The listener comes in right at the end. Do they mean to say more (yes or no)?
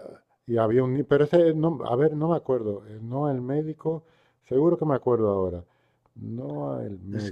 yes